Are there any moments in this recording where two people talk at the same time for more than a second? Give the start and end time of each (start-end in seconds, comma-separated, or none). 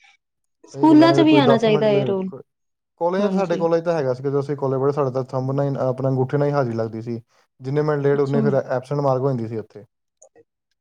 0.7-2.3